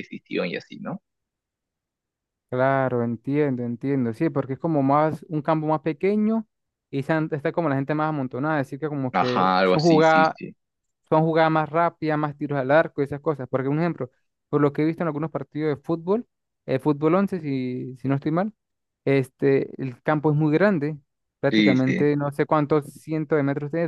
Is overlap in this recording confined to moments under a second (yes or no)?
no